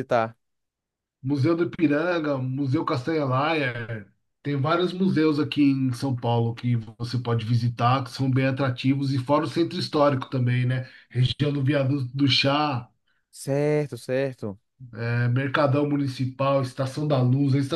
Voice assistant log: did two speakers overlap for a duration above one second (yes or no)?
no